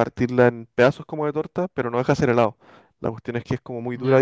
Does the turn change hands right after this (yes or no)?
no